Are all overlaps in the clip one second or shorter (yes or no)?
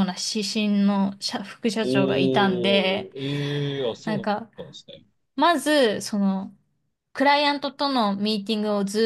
no